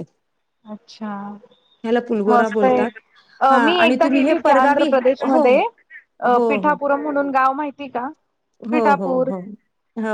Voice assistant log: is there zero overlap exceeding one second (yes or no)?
no